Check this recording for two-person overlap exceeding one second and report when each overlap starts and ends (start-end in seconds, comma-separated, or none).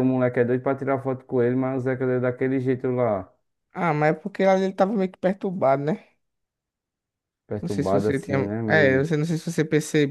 7.6-9.1